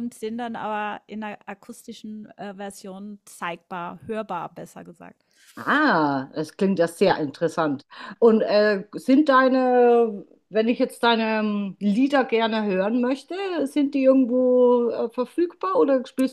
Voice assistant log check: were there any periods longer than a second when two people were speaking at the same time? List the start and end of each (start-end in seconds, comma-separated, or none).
none